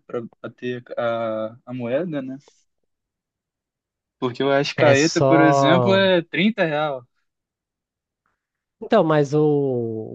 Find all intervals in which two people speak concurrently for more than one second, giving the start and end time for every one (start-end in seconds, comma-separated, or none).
4.8-6.1